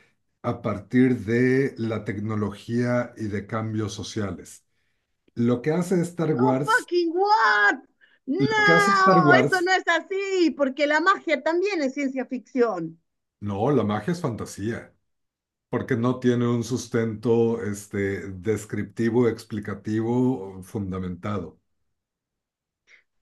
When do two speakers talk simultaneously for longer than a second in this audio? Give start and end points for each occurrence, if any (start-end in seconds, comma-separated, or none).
8.4-9.7